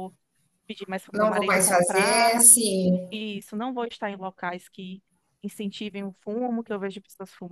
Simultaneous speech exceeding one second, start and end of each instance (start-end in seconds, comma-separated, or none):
1.1-2.5